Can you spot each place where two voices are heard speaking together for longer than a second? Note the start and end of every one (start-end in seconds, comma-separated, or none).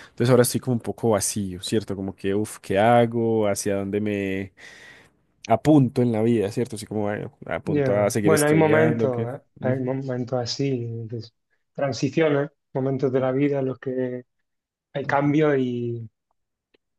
7.6-9.9